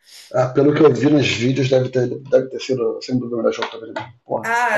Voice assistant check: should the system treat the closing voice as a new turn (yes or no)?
yes